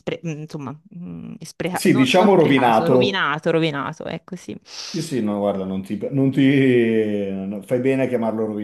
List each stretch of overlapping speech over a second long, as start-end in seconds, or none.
1.7-3.3